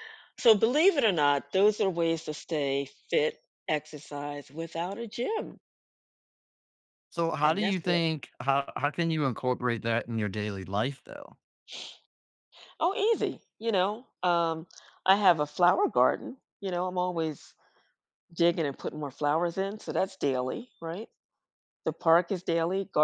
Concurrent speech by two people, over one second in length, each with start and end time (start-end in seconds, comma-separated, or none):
none